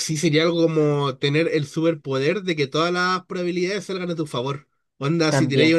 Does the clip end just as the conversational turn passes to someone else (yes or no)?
no